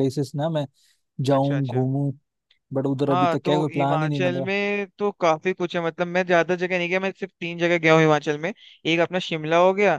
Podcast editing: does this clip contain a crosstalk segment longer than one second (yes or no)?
yes